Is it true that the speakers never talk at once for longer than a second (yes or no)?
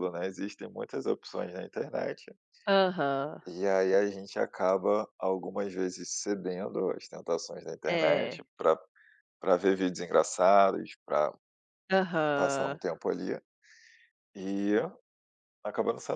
yes